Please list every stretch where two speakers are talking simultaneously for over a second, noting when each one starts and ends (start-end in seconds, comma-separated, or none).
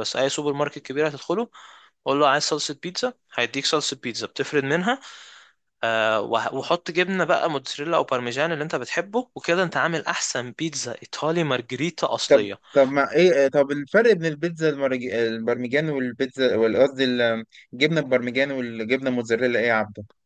none